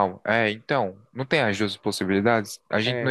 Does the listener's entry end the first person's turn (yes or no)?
no